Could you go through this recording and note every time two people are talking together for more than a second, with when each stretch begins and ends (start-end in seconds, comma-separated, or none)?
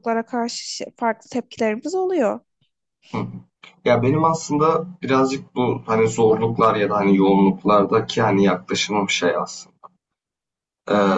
none